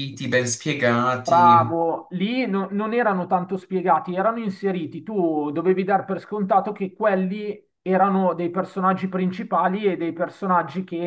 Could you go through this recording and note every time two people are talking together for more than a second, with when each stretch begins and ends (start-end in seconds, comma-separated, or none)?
none